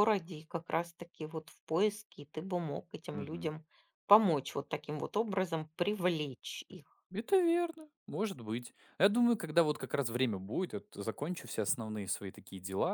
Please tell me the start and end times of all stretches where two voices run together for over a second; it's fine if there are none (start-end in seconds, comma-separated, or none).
none